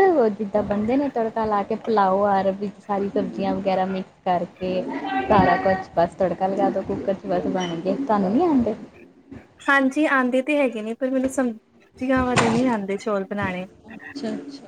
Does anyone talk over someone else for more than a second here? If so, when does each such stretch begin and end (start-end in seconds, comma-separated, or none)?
none